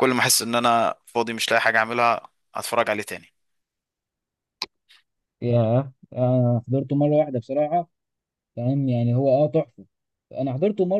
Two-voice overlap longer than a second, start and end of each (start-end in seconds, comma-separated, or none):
none